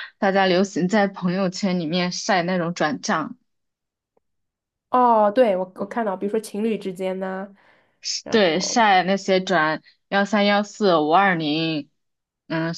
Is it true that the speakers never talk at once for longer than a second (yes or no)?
yes